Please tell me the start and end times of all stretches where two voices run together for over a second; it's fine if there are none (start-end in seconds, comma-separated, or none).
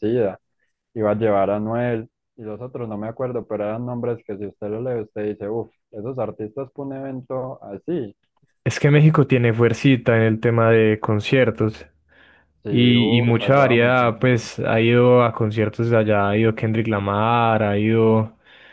12.7-14.3